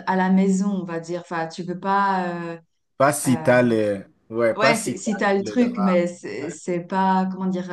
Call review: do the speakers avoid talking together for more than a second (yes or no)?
no